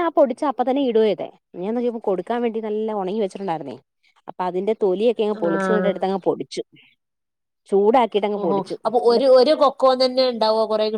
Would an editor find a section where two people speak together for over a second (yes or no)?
no